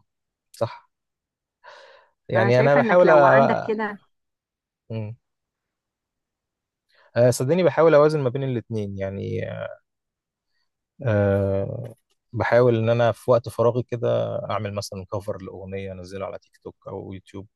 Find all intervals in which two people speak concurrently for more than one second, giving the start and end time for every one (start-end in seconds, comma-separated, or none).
2.3-3.8